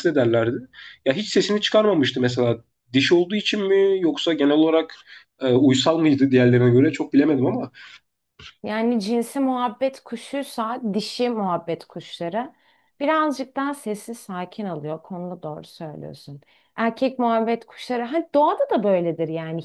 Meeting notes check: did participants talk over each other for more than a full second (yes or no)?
no